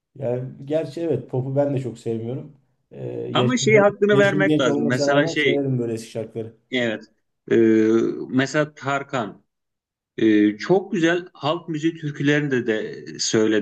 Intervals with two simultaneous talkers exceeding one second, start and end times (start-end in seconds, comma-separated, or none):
3.3-5.7